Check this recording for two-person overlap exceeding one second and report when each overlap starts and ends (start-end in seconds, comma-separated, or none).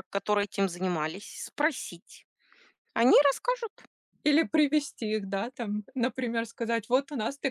none